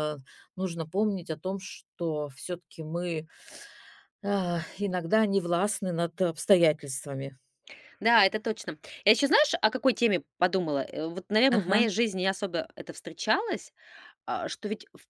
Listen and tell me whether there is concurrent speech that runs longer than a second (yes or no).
no